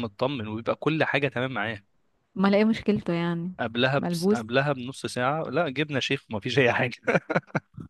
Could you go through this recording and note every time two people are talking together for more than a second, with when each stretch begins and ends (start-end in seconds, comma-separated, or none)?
none